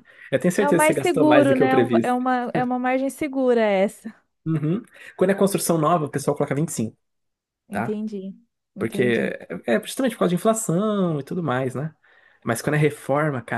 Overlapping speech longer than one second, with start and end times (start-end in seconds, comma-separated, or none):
0.6-2.2